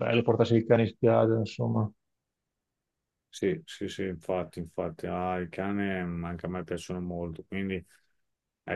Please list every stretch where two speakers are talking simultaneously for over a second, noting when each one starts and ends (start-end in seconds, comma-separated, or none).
none